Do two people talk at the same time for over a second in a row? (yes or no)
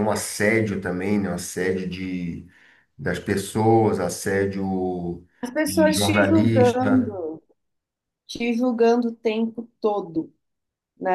yes